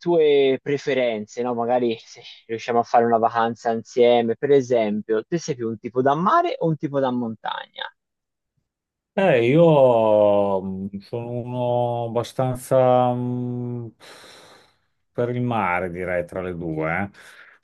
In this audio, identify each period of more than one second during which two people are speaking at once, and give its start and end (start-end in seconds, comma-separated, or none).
none